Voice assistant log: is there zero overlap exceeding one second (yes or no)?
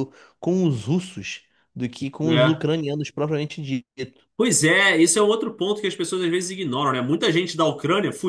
yes